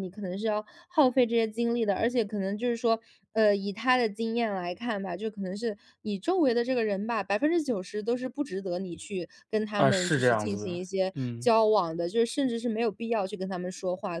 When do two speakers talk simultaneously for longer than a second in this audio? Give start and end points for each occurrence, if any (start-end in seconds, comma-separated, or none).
9.8-11.5